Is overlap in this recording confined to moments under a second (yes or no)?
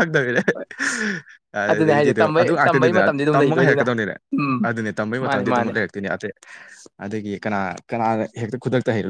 no